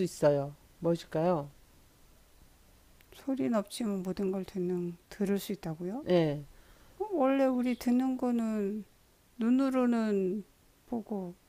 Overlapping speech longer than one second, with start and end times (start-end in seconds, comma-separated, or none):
none